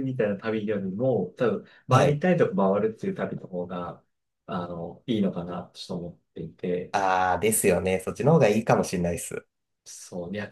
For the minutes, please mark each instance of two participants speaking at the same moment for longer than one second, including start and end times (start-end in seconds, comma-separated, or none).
none